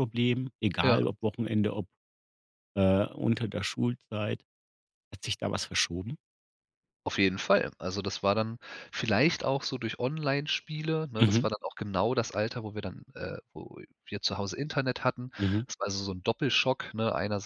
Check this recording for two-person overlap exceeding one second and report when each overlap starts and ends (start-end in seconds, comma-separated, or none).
none